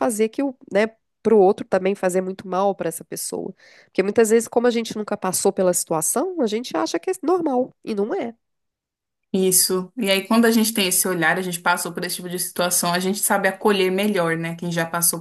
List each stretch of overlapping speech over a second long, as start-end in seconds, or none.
none